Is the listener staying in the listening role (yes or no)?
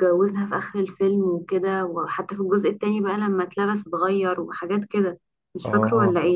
no